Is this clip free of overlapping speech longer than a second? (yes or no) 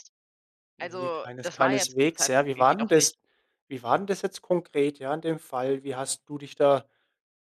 no